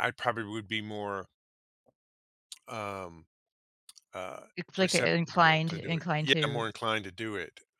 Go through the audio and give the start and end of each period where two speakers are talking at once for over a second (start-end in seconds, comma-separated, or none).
4.5-6.7